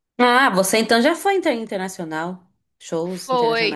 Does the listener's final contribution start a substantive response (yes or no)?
yes